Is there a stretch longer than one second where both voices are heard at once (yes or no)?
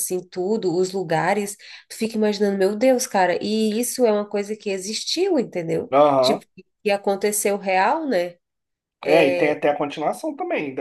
no